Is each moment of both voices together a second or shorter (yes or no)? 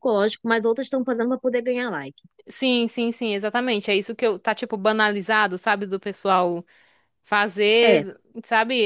yes